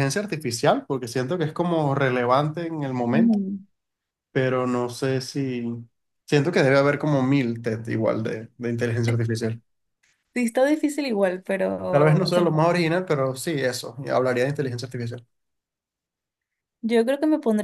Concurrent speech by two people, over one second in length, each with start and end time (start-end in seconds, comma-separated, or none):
none